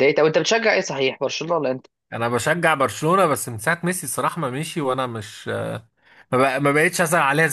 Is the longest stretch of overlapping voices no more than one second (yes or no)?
yes